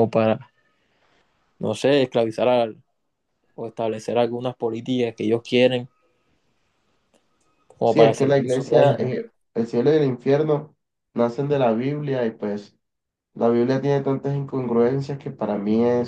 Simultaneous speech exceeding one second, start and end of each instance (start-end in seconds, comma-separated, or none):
7.8-9.2